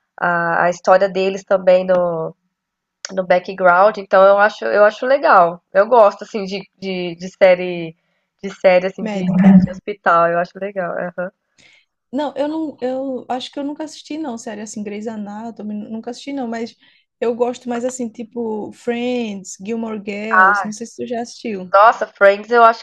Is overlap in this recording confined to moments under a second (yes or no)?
yes